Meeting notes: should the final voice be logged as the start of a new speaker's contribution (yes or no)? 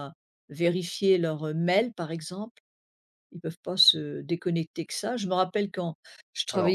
no